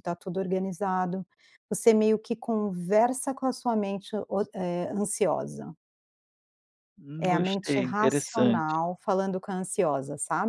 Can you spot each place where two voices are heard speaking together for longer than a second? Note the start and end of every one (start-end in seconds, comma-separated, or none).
7.2-8.7